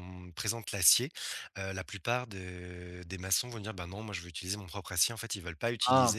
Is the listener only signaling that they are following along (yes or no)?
yes